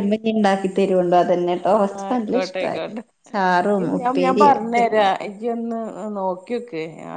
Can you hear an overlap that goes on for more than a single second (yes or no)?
yes